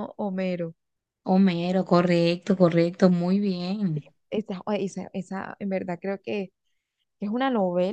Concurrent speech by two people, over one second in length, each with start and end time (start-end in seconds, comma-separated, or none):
none